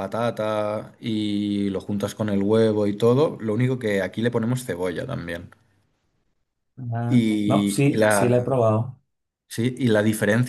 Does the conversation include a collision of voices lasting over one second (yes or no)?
yes